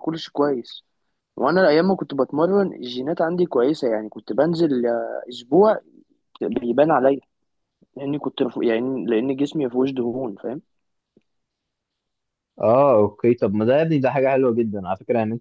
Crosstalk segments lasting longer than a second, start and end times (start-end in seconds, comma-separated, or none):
none